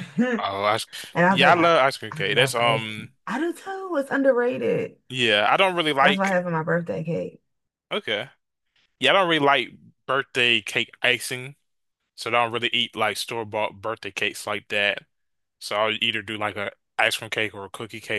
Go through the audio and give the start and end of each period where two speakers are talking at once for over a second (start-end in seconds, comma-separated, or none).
1.3-3.1